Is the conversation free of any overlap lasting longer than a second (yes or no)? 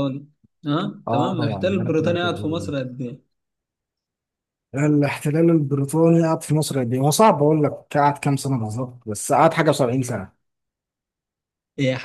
no